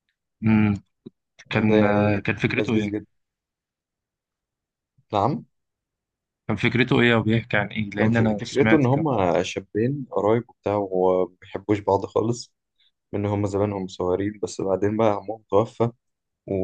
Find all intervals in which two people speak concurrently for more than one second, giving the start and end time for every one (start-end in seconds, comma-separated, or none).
1.7-3.0, 8.0-9.2